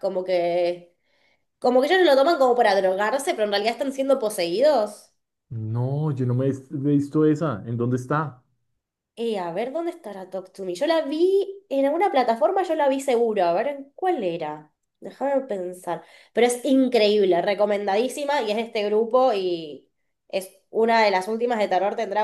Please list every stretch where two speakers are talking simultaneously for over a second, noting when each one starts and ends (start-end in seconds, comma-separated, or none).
none